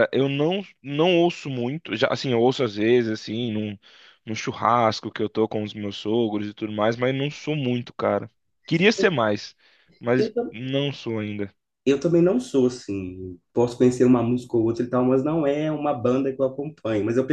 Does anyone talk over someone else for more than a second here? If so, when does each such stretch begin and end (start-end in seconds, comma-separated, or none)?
none